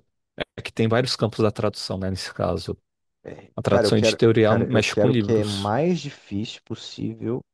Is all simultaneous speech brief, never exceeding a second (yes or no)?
no